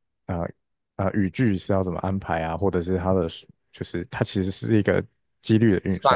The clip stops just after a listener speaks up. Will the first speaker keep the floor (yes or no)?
yes